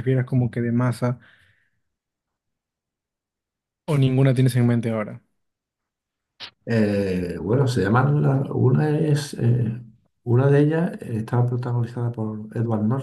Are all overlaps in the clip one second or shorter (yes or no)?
yes